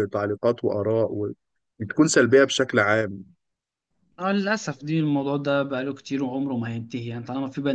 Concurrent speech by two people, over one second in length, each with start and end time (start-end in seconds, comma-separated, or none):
none